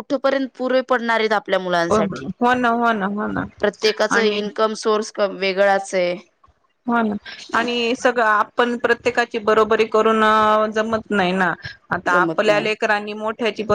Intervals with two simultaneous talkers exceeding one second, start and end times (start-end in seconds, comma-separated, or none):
none